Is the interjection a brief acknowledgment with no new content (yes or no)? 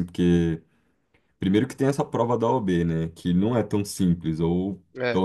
yes